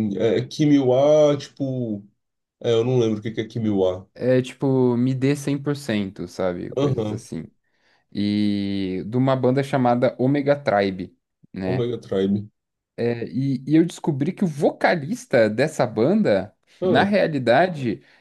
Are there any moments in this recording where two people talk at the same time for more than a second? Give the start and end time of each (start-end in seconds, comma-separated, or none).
none